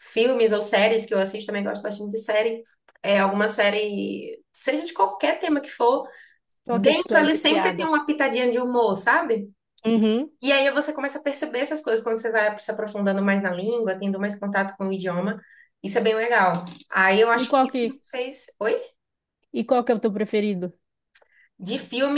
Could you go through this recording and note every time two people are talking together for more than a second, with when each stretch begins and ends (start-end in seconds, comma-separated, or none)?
6.7-7.9